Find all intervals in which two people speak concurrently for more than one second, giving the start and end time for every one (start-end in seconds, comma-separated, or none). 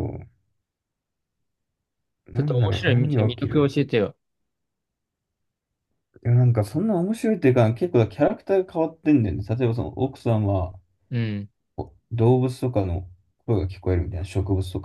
2.3-3.8